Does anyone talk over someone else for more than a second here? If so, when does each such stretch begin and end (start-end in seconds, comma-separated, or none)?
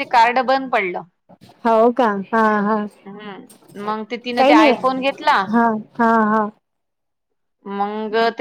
none